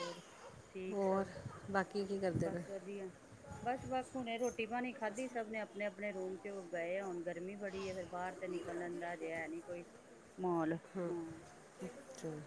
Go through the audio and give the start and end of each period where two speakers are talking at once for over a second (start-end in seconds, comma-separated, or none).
none